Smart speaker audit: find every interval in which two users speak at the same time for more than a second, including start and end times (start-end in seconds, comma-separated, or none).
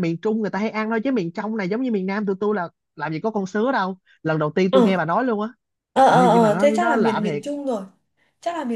6.1-7.4